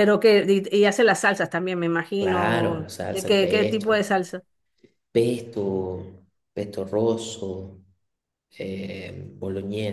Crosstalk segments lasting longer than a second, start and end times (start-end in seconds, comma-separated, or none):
2.2-4.1